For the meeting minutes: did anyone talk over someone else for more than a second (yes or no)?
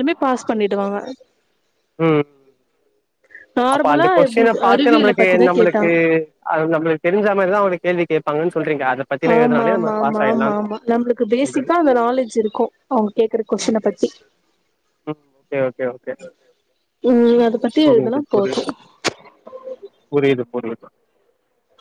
yes